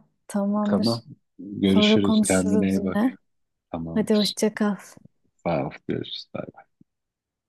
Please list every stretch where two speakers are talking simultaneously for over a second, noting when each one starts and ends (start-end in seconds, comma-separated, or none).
1.6-3.1